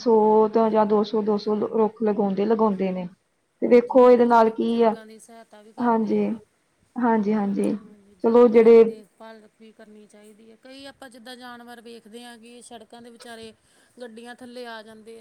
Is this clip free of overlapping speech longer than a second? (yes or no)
no